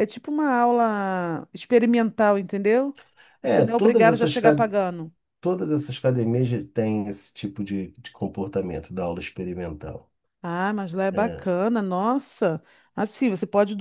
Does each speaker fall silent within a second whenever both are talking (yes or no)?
no